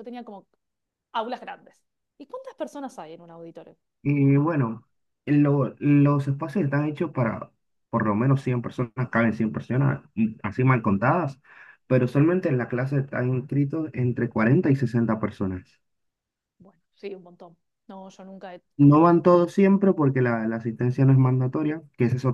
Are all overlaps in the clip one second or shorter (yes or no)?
yes